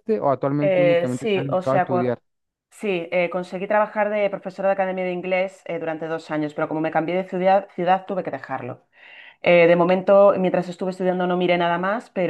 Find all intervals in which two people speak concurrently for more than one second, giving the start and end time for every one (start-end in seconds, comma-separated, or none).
0.6-2.1